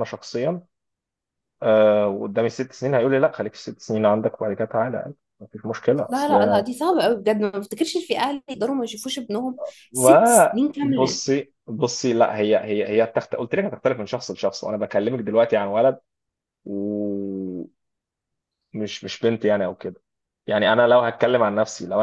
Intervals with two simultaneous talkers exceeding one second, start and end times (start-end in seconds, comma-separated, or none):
9.9-11.2